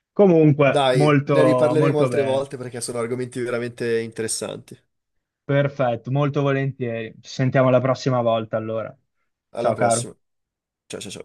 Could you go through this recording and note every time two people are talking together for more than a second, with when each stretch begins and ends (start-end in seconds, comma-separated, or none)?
0.7-2.5